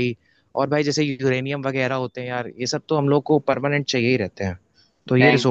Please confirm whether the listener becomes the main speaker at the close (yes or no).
yes